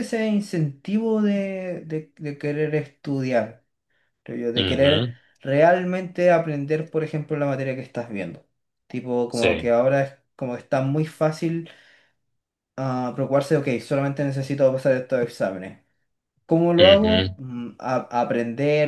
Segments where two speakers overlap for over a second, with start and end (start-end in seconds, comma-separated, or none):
none